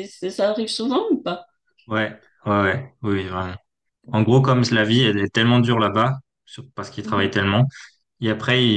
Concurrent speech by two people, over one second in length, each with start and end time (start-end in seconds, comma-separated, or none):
none